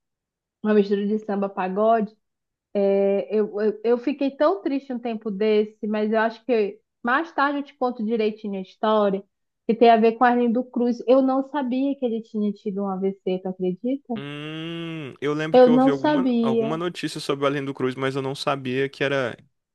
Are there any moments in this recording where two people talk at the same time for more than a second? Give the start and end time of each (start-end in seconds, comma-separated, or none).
15.5-16.8